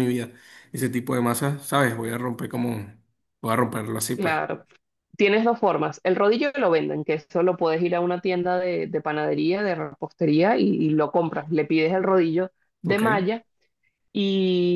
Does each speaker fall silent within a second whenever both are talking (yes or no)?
yes